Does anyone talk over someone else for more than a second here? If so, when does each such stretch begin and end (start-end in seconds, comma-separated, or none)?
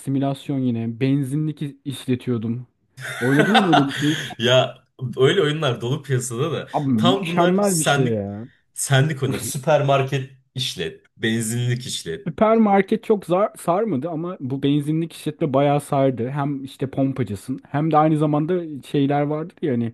6.7-8.2